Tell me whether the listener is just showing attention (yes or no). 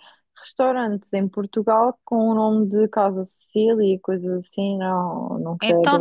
no